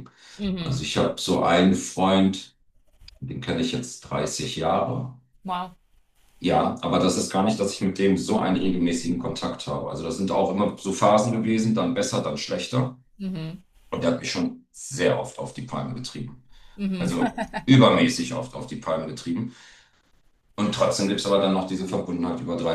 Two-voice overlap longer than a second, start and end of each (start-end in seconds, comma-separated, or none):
none